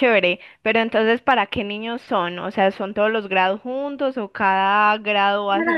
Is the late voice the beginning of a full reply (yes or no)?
yes